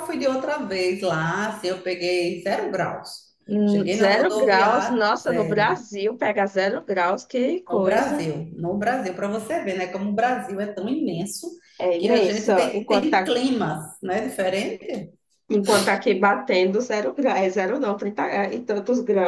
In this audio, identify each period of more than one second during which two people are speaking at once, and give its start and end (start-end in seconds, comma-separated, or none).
3.5-5.8, 12.0-13.2